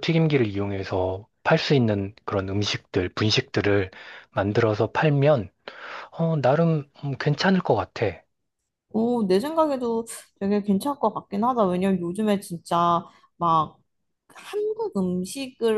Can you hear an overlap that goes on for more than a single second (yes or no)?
no